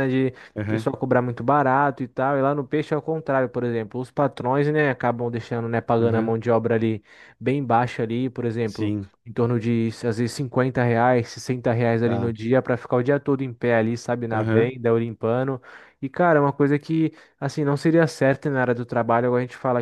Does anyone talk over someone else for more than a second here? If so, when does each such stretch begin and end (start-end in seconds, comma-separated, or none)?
none